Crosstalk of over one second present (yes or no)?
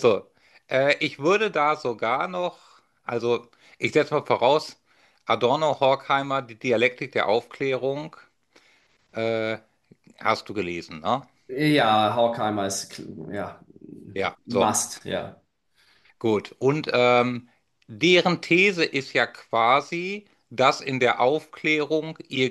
no